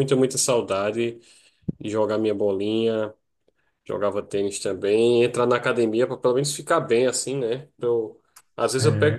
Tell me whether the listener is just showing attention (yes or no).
yes